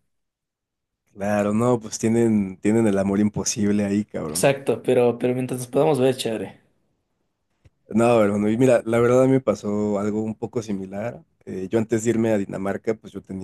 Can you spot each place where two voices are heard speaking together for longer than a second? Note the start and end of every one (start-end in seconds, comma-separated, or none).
none